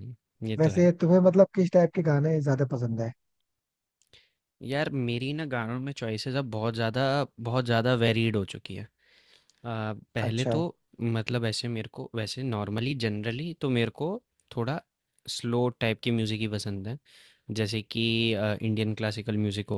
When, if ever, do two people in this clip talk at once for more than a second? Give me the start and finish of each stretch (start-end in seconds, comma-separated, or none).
none